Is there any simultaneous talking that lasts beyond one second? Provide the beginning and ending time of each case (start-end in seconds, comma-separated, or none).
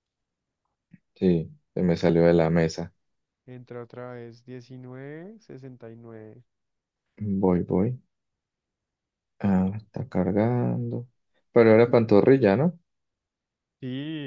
none